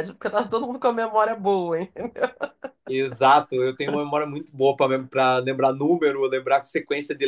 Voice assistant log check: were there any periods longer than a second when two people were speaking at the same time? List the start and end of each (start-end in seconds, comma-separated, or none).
none